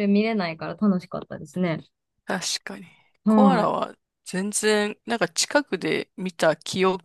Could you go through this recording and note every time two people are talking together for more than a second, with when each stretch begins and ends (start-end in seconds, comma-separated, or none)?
none